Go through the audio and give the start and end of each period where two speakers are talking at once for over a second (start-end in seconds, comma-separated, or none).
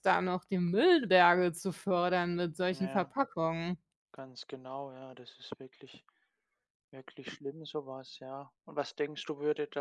none